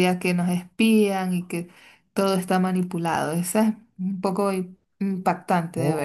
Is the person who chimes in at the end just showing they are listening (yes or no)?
no